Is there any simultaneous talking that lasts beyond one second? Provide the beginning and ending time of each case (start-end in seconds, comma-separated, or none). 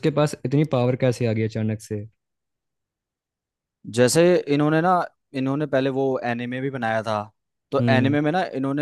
none